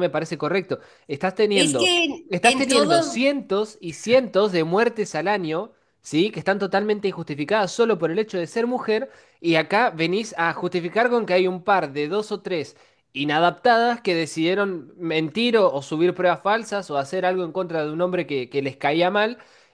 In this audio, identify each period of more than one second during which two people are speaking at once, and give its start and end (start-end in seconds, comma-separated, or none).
1.5-3.2